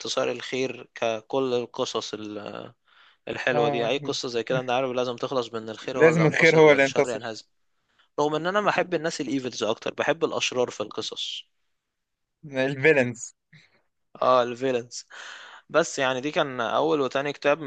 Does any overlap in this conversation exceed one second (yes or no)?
yes